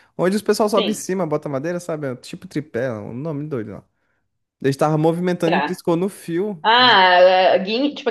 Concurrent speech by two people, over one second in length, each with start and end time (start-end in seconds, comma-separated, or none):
none